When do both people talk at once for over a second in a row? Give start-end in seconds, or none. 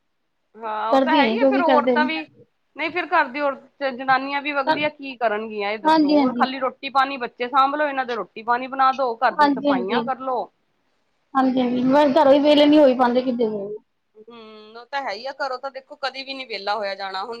none